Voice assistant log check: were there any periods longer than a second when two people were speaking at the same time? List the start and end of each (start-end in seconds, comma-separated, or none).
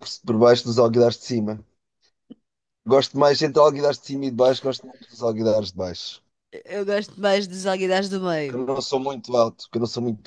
none